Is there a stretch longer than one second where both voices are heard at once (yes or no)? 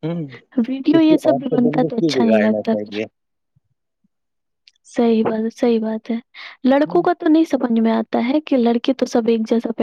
yes